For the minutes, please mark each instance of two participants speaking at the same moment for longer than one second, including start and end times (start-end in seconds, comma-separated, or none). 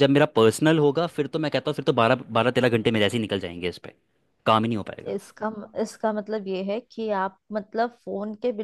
none